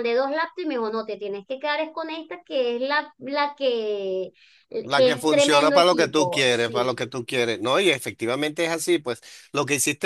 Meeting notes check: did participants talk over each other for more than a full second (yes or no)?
yes